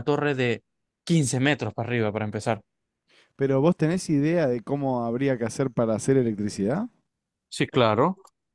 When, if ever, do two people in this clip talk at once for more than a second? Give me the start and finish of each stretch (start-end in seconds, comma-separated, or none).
none